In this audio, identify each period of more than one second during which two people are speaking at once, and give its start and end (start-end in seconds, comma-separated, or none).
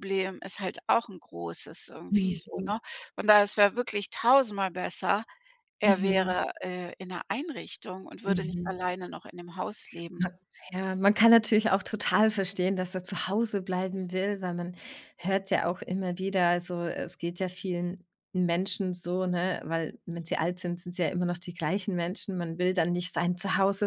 none